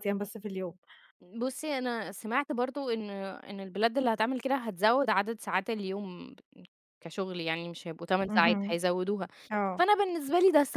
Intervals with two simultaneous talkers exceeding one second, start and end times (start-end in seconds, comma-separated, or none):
none